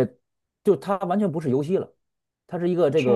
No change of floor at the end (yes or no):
yes